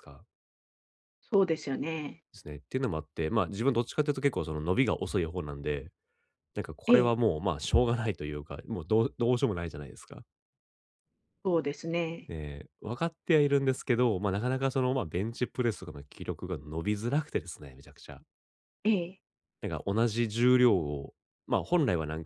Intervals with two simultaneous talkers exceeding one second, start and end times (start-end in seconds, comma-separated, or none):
none